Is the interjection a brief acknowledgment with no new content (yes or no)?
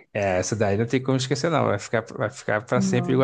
yes